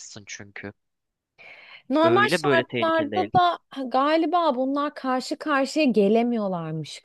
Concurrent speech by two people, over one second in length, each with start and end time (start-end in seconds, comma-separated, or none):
2.0-3.3